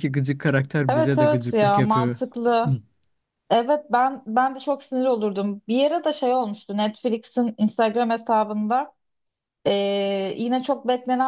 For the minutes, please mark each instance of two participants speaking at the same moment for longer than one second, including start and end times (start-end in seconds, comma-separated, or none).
0.9-2.2